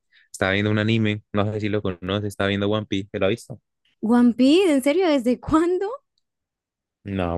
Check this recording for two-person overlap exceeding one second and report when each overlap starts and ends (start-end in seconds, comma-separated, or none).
none